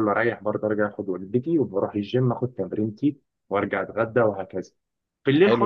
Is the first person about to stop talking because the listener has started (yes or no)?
no